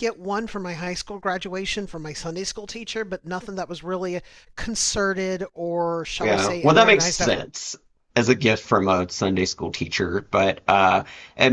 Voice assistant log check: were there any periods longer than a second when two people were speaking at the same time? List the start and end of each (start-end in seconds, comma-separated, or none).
6.2-7.5